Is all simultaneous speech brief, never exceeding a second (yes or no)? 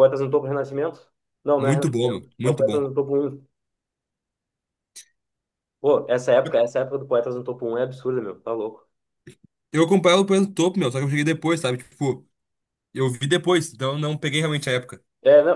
no